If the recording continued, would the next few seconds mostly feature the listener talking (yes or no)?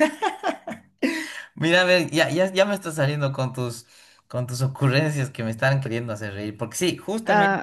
yes